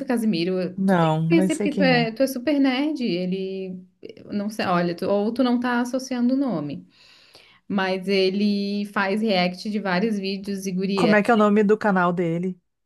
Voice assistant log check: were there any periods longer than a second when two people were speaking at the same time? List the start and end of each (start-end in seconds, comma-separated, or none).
0.8-2.1